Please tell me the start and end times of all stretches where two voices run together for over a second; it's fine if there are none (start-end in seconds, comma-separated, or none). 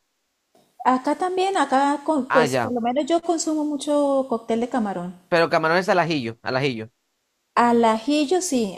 none